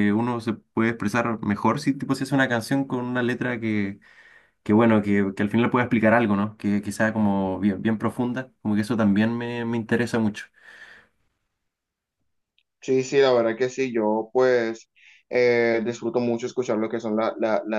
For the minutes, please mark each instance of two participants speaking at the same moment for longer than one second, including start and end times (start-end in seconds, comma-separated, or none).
none